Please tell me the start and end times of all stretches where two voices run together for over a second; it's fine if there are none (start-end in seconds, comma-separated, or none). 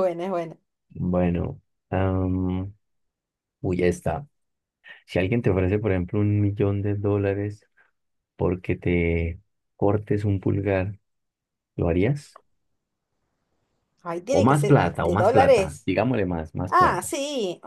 14.3-15.9